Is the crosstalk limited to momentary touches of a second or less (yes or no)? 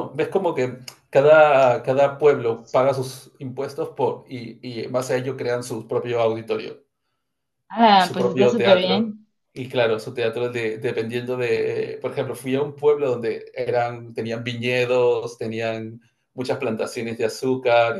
no